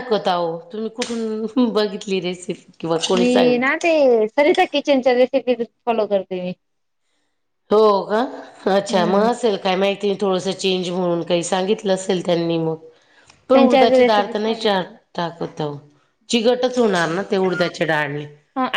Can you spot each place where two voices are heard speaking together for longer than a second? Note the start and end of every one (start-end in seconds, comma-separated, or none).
13.5-14.9